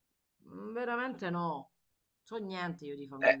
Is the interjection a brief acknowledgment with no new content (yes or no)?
no